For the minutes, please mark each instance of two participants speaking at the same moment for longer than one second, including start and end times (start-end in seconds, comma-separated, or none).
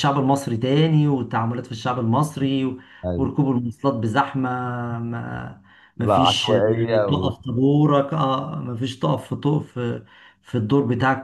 6.0-7.3